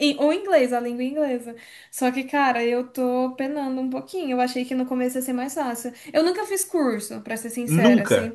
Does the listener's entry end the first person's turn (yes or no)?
no